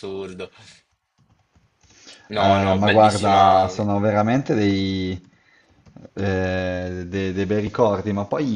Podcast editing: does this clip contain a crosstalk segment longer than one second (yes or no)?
yes